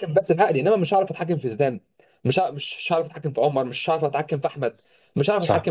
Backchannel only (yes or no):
yes